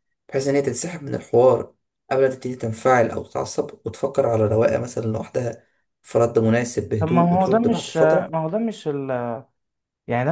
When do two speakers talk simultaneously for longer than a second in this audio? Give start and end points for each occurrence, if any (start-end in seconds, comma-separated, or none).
7.0-8.4